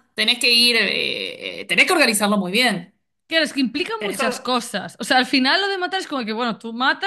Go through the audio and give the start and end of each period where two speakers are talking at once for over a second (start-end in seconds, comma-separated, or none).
none